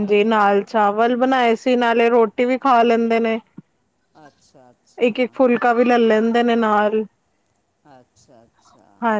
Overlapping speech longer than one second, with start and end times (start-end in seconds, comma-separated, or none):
none